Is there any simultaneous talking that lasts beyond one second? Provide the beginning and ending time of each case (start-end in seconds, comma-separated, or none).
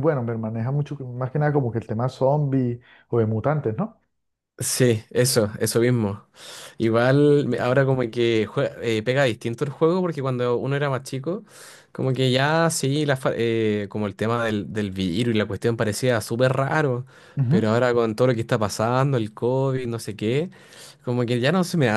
none